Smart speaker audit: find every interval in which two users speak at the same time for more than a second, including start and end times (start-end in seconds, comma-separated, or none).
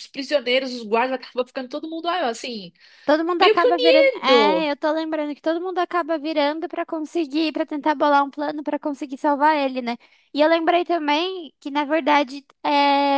3.4-4.7